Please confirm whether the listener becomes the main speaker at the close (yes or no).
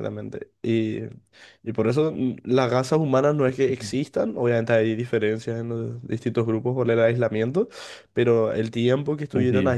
no